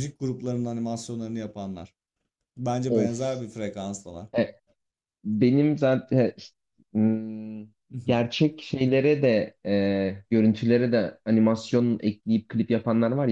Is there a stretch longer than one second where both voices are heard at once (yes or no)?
no